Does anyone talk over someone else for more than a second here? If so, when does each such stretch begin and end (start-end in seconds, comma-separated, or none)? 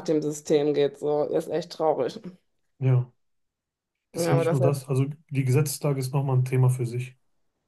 none